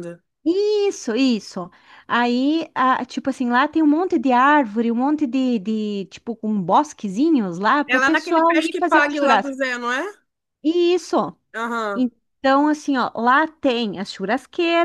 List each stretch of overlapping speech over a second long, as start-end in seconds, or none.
7.9-9.6